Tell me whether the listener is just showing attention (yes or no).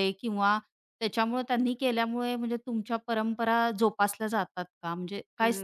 no